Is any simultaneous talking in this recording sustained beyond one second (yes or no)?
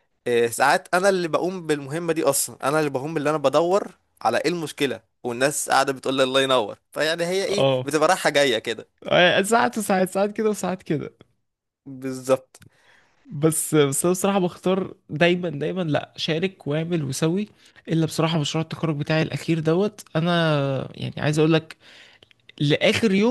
no